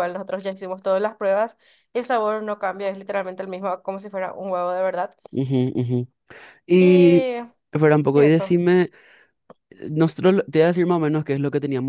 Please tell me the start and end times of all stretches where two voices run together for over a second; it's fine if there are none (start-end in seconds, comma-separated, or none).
none